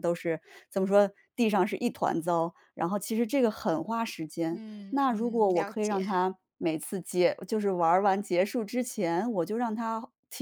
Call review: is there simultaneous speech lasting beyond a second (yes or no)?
yes